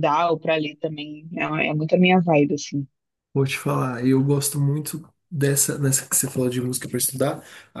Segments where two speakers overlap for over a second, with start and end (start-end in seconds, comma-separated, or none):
none